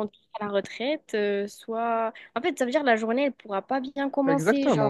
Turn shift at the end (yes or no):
yes